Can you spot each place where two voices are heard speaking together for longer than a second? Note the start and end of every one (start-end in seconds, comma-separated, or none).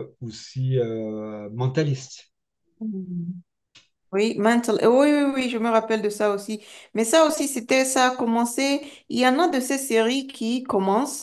none